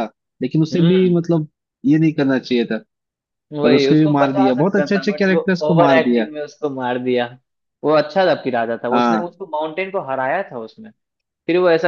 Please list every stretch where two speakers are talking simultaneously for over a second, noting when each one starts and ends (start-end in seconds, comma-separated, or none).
3.6-6.2